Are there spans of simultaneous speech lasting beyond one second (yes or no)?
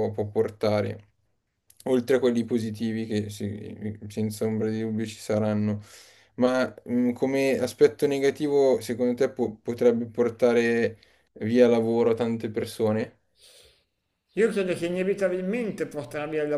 no